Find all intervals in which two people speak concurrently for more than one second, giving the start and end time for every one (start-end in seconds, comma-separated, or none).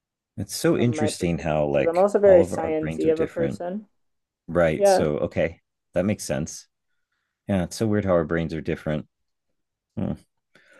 0.7-3.6